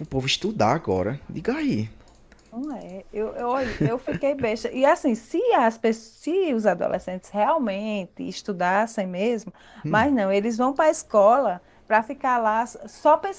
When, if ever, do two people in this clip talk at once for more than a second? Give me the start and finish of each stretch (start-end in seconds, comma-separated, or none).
none